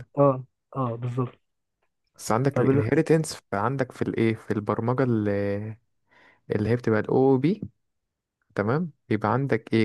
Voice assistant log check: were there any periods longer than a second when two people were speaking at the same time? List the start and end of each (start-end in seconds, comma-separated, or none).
none